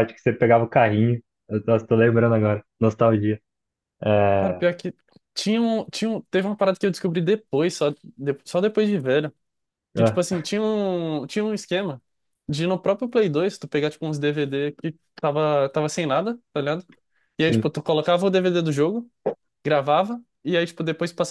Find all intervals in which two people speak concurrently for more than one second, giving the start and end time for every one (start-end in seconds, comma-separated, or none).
none